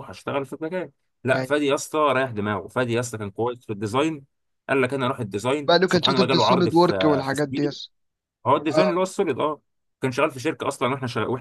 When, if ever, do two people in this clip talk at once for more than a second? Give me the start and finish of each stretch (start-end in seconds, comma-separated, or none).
5.7-7.3